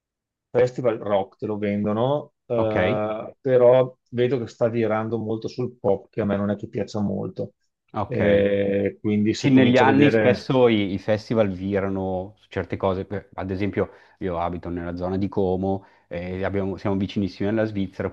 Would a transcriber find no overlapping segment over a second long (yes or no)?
no